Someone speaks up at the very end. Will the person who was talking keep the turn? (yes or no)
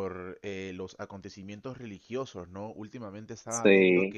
yes